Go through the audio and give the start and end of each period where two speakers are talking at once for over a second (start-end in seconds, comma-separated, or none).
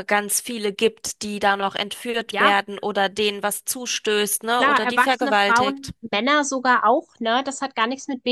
4.6-5.9